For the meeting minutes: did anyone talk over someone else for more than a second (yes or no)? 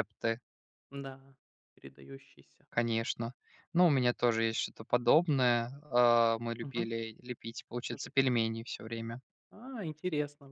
no